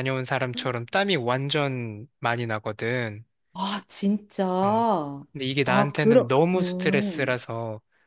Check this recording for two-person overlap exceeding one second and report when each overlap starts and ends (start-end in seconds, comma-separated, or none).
5.3-7.4